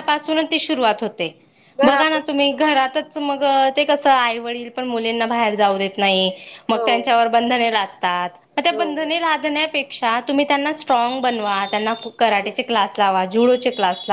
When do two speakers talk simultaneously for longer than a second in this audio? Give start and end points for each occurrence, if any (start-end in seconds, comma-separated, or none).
1.9-3.1